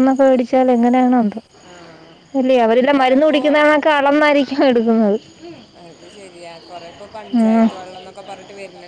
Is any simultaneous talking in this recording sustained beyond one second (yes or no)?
no